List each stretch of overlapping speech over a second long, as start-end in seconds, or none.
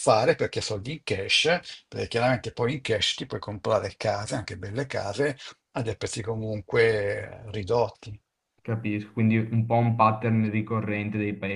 none